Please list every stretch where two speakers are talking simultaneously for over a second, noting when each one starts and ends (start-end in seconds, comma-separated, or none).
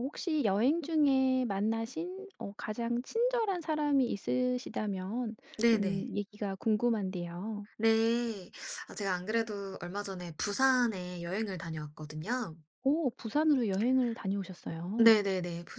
none